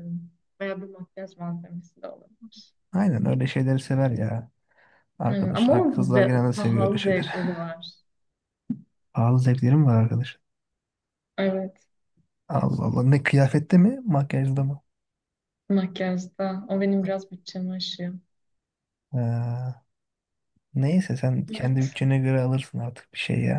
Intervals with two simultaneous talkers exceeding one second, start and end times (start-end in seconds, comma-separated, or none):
5.3-7.3